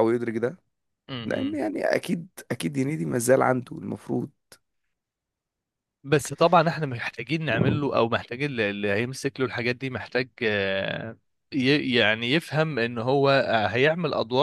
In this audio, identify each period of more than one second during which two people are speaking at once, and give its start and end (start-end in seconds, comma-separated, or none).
none